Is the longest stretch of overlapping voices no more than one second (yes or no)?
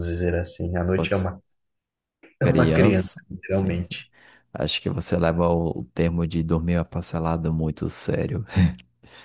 no